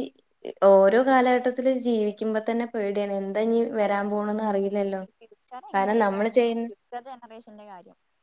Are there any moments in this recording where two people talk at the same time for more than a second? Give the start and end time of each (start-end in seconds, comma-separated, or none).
none